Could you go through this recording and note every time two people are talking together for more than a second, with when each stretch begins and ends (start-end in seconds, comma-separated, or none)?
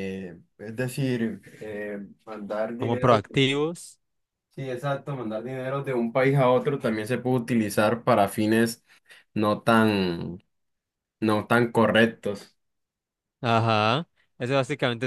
none